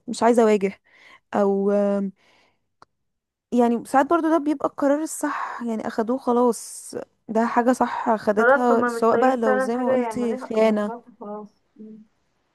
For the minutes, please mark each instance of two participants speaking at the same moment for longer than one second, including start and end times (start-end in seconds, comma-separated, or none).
8.4-10.9